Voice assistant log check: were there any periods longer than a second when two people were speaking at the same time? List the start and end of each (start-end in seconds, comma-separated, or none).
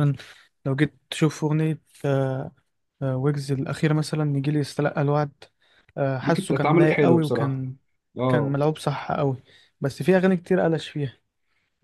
6.2-7.6